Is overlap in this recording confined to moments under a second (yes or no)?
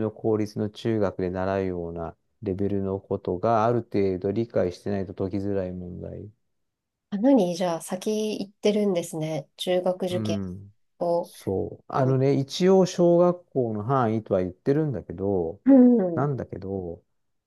yes